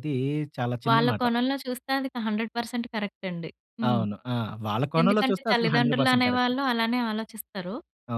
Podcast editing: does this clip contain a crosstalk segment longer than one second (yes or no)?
yes